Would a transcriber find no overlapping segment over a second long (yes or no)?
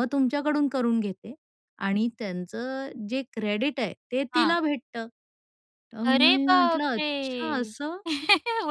no